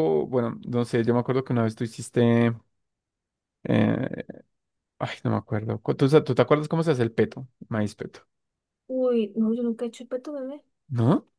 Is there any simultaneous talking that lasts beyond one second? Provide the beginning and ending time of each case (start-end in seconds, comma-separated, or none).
none